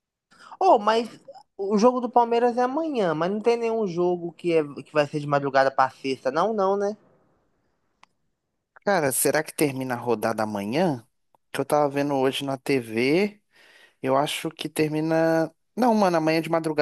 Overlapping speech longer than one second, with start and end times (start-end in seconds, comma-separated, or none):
none